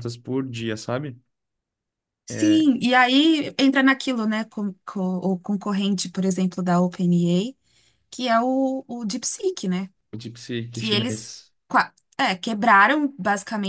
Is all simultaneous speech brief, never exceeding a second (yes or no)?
yes